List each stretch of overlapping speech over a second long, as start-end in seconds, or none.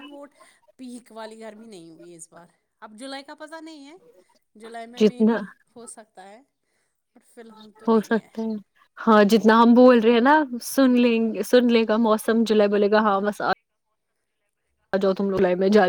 none